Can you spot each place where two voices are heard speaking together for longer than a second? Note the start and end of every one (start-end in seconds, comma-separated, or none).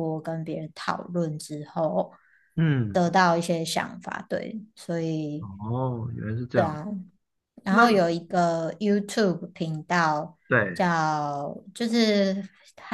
none